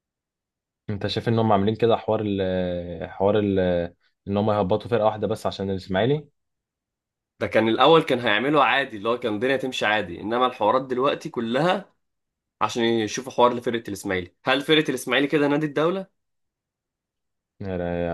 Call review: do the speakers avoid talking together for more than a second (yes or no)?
yes